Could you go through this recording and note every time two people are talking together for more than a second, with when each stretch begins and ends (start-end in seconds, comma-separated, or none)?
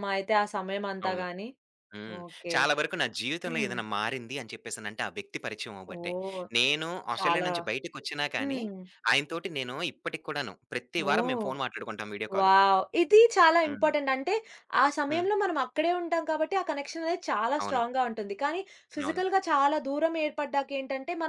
none